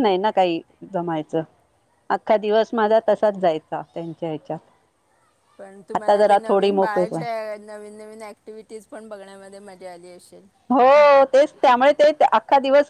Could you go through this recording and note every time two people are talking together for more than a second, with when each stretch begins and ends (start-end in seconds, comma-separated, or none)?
6.0-7.2